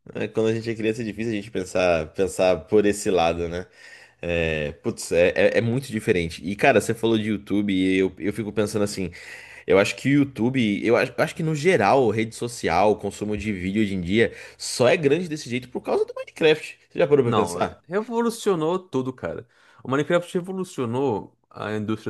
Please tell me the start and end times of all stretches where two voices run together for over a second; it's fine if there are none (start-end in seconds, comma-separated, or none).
none